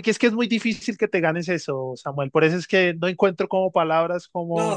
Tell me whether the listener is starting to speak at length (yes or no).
yes